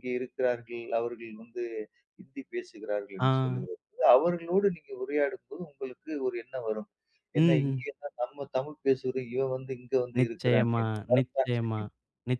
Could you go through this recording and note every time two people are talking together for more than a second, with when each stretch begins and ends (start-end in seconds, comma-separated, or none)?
10.2-11.8